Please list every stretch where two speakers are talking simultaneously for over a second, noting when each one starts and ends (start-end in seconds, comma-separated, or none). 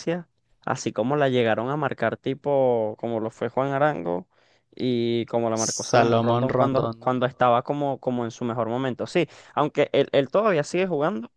5.5-7.2